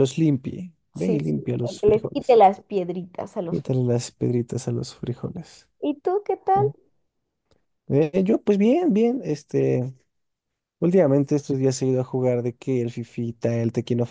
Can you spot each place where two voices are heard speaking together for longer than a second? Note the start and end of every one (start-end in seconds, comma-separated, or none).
1.0-2.4